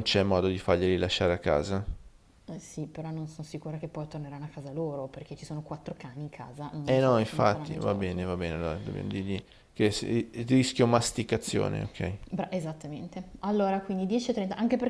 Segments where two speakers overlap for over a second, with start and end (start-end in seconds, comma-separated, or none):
6.8-8.3